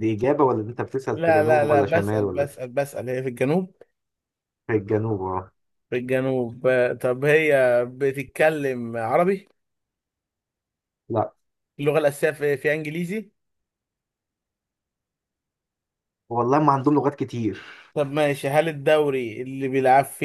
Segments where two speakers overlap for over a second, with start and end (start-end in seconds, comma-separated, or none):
1.1-2.6